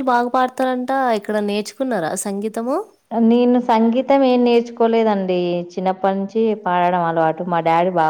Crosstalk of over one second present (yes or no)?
no